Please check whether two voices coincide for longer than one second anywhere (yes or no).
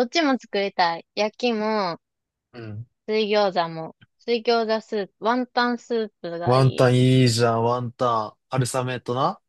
no